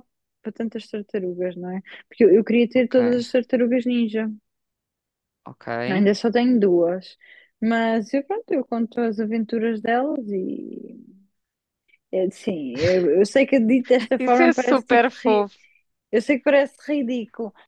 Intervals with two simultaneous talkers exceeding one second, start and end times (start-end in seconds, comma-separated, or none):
14.2-15.5